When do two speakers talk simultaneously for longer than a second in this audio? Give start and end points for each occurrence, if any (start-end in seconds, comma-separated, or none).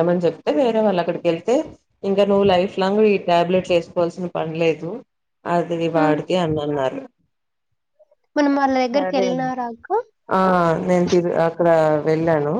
none